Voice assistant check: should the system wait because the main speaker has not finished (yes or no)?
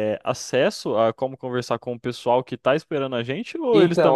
no